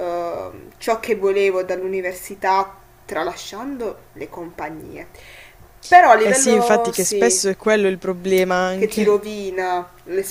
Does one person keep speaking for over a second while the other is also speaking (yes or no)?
yes